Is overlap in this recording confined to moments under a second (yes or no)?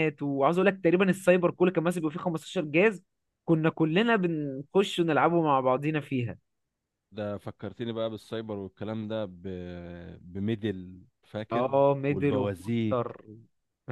no